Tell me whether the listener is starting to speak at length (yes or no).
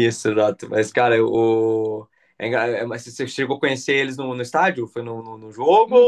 yes